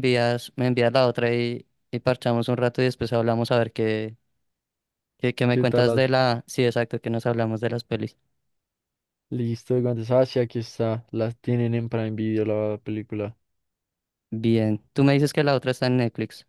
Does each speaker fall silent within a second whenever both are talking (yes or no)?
yes